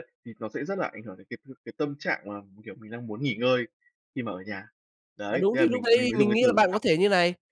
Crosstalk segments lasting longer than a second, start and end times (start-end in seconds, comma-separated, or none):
5.3-6.8